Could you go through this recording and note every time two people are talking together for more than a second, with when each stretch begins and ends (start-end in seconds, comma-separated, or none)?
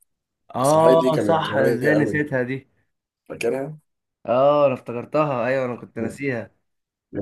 0.6-2.2